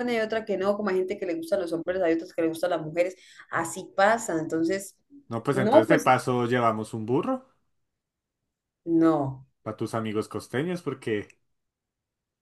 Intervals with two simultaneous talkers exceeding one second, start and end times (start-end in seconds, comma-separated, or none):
none